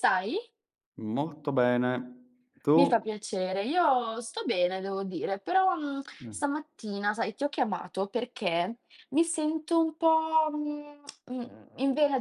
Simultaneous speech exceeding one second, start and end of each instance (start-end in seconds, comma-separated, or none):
none